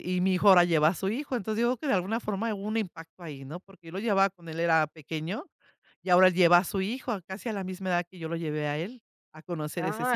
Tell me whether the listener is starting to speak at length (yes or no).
yes